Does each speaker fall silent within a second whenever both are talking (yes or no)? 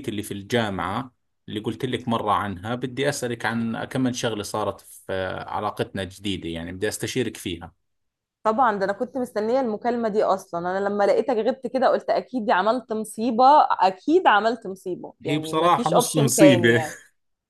no